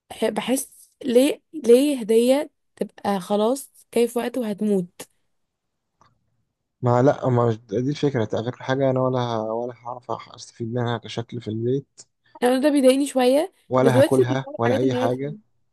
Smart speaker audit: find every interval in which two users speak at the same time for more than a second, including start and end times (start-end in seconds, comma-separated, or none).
13.7-15.1